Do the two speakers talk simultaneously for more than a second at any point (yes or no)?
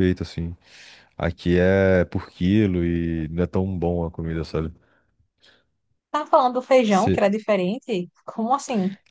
no